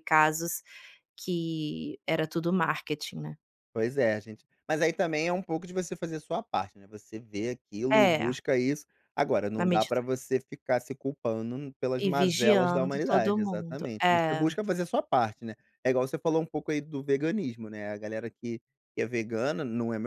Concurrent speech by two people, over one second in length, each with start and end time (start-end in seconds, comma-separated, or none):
12.0-14.5